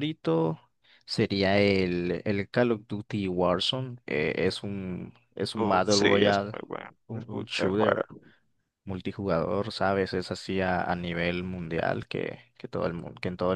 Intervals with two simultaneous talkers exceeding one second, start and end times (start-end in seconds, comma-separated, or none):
5.6-8.0